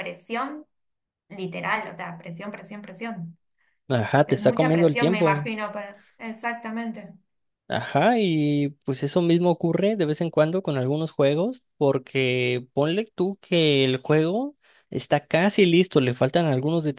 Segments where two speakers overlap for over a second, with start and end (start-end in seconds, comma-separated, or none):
4.2-5.5